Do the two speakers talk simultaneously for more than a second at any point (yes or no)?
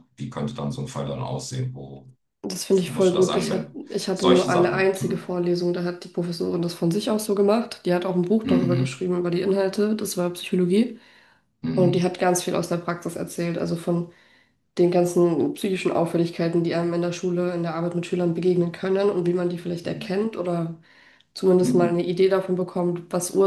yes